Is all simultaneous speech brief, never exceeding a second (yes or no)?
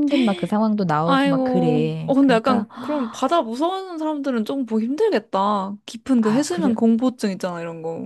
no